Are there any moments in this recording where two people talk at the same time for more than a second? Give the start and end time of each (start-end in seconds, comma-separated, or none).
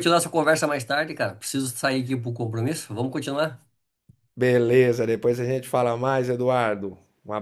none